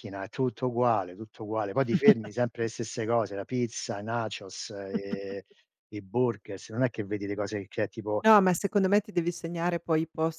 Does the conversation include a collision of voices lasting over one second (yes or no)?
no